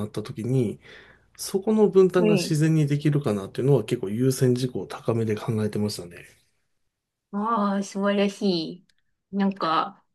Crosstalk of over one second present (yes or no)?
no